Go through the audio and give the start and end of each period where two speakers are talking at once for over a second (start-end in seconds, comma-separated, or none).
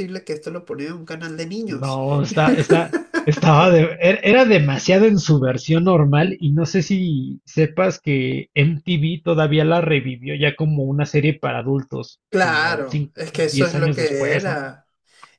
12.3-14.6